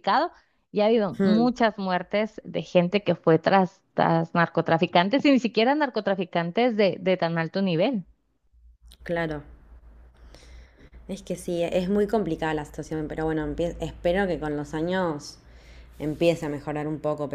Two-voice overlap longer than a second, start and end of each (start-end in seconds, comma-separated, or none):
none